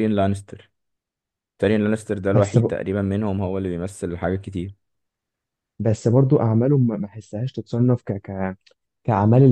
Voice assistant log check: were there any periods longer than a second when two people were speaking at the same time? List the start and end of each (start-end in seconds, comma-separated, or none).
none